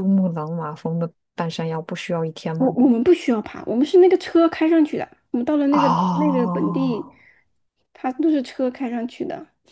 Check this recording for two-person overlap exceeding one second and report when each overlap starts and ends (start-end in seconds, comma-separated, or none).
5.7-7.1